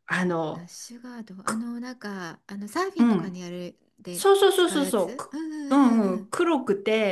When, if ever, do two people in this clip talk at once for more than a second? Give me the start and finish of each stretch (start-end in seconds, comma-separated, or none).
4.1-6.3